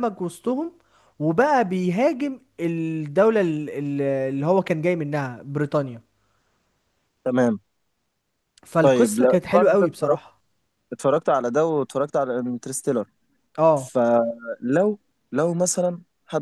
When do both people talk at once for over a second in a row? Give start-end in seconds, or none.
8.8-10.2